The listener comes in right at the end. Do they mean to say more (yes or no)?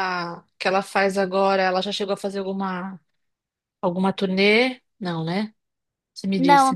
yes